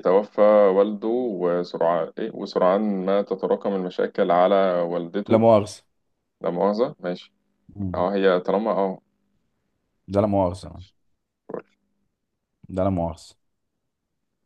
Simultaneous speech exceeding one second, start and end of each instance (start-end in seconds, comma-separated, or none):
none